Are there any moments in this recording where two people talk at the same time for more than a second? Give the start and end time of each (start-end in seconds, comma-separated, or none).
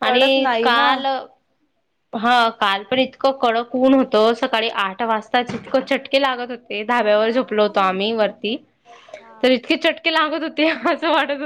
none